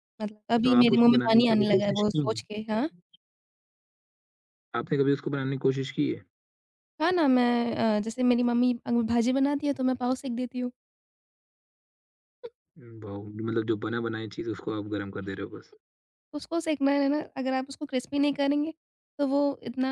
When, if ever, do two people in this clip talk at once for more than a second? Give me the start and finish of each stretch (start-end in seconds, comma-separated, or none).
0.6-2.6